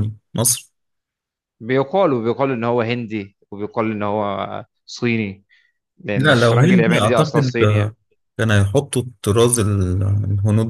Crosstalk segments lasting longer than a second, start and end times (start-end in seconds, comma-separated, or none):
6.2-8.0